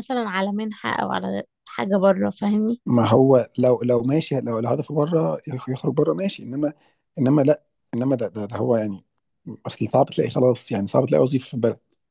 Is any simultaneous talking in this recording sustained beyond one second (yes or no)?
no